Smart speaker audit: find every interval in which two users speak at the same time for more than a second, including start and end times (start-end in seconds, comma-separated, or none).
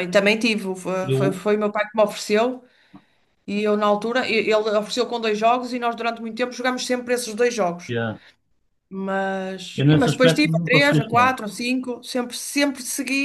9.8-11.3